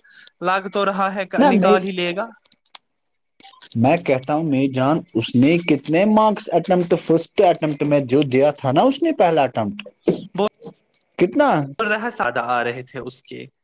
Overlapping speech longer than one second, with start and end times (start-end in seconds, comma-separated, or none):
none